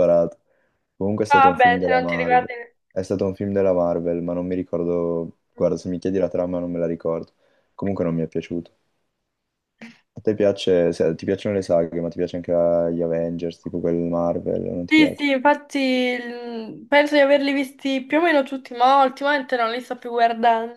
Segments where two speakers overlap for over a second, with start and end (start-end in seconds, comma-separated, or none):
1.3-2.5